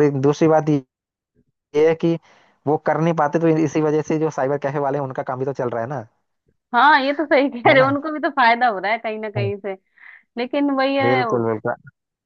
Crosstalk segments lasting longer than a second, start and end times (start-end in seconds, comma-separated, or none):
none